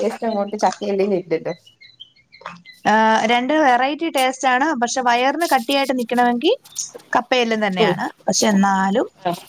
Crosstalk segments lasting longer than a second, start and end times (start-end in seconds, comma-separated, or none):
none